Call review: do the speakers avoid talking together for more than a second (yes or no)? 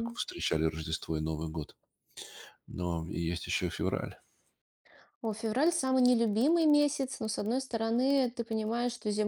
yes